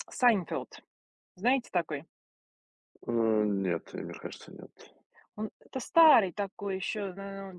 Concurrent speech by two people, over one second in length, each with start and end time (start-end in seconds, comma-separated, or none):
none